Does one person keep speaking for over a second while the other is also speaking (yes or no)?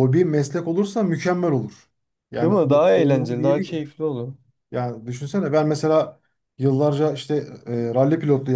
yes